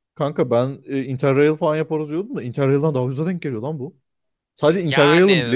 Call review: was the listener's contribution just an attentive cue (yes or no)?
yes